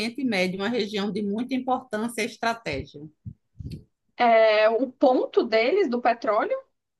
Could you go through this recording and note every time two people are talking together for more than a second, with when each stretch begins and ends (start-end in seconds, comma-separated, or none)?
none